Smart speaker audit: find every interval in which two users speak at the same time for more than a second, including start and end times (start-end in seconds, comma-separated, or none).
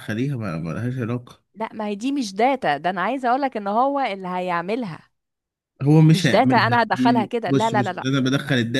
6.1-8.1